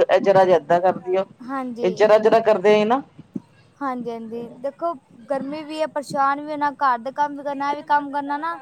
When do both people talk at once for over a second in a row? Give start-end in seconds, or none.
none